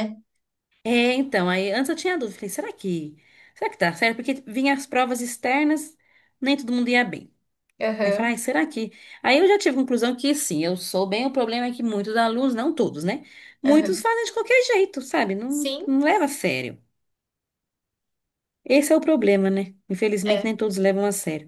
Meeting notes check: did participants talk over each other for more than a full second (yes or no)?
no